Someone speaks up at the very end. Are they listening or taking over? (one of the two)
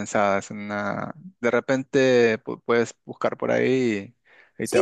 taking over